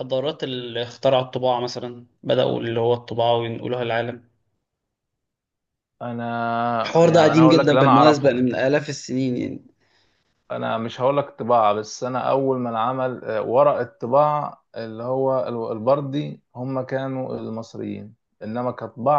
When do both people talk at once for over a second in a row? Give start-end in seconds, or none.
7.0-8.5